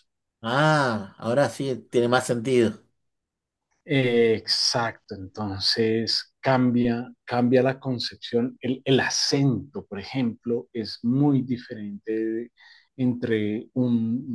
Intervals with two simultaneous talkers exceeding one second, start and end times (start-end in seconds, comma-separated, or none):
none